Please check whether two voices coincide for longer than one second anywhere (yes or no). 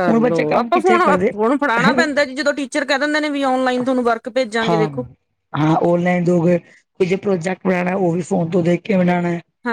no